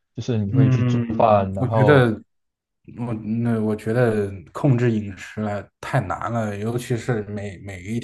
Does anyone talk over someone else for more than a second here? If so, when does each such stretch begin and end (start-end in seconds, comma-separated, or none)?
0.5-2.1